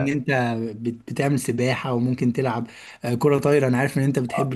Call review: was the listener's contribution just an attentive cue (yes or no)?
no